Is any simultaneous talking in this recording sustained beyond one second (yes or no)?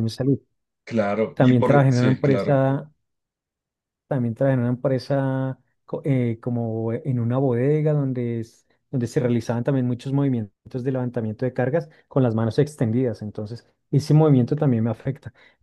yes